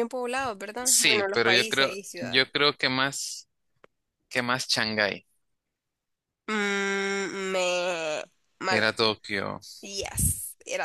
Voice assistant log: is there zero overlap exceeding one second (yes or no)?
no